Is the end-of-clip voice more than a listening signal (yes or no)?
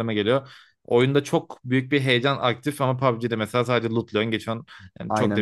no